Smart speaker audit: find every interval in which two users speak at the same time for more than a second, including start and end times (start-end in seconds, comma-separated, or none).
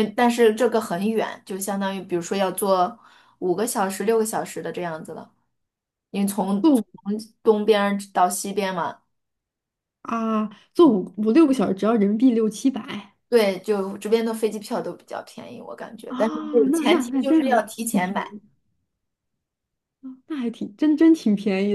16.1-18.4